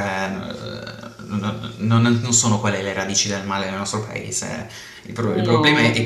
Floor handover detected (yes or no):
no